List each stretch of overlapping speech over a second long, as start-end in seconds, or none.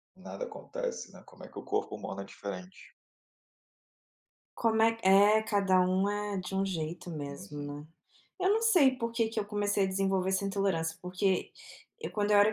none